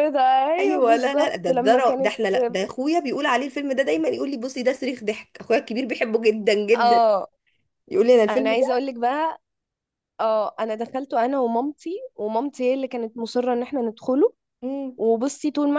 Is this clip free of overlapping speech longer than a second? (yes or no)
no